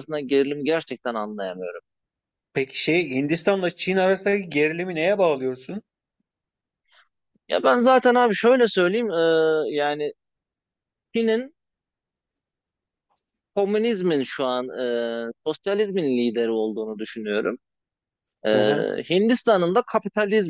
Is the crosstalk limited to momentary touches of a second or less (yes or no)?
yes